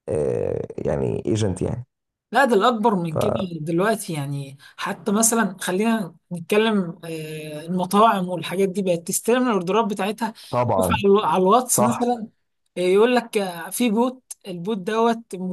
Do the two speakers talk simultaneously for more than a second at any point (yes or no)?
no